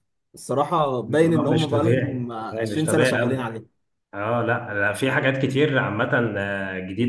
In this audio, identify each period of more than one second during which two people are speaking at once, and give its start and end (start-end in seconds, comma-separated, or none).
1.1-3.4